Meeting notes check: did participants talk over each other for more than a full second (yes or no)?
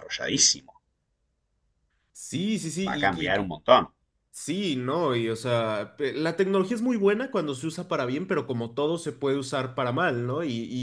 no